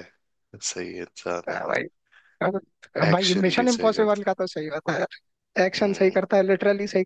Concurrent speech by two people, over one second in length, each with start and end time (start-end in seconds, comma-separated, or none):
3.1-4.3